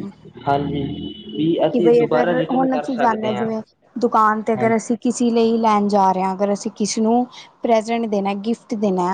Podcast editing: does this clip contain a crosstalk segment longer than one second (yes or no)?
yes